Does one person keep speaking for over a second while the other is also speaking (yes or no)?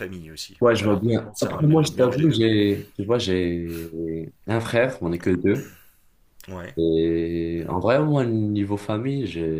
yes